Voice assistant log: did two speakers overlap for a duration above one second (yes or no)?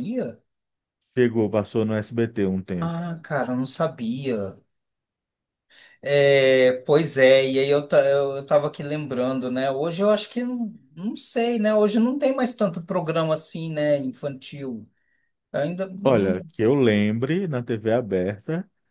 no